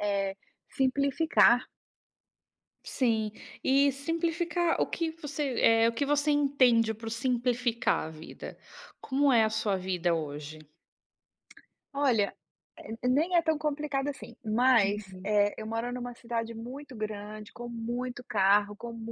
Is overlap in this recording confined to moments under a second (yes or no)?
yes